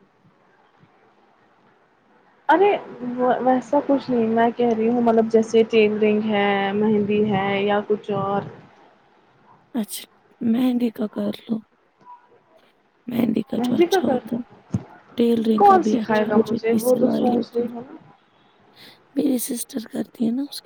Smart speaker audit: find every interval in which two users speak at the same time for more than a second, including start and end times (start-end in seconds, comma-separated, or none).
15.6-17.9